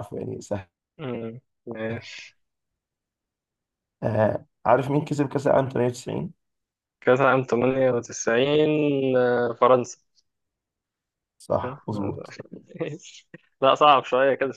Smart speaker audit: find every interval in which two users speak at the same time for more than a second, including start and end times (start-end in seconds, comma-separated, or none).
none